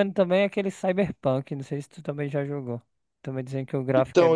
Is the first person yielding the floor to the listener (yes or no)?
yes